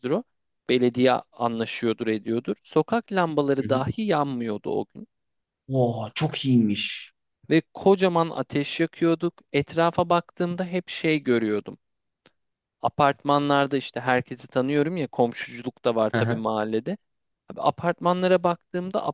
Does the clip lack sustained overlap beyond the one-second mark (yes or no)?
yes